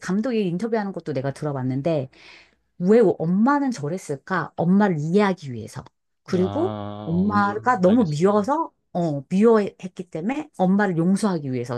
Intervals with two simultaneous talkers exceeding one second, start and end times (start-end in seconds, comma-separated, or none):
6.3-8.2